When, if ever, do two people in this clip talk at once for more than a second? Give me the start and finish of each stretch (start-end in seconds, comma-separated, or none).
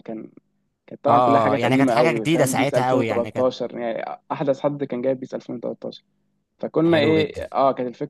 1.1-3.5